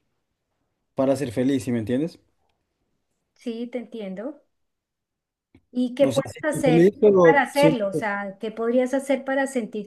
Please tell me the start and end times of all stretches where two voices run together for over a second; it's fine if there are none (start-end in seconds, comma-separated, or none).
6.0-8.0